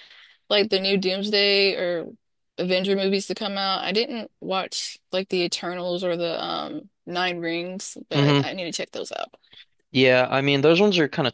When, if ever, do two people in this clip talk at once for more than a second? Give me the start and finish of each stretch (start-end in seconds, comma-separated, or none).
none